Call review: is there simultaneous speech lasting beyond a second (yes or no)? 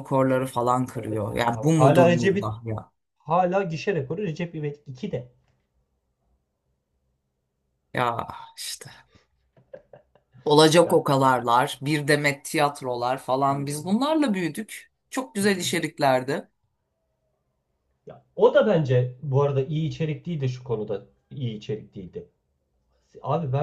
yes